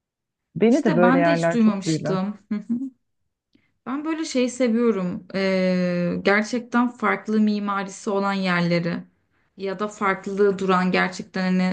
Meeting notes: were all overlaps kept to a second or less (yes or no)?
no